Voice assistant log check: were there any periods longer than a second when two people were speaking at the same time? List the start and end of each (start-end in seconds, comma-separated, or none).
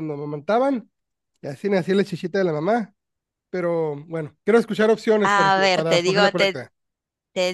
5.2-6.6